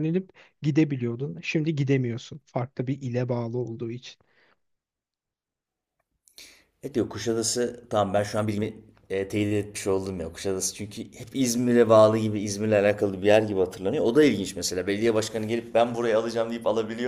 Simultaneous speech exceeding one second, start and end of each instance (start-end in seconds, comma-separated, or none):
none